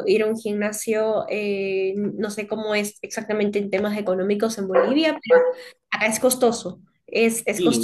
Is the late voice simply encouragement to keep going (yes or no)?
no